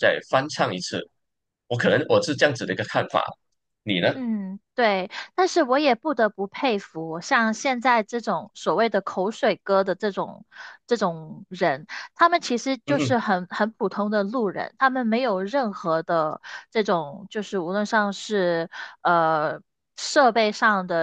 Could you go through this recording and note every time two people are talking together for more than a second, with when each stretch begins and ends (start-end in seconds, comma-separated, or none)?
none